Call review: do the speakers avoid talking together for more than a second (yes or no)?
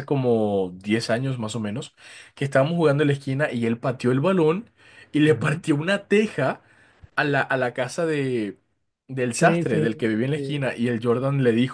no